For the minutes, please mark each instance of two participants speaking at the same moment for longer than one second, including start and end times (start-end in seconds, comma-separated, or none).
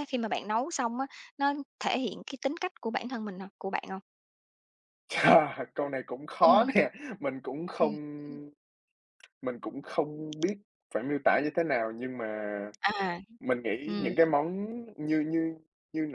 none